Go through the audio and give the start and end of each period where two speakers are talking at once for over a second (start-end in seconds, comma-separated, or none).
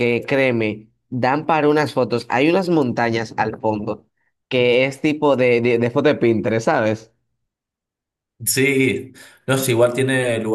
none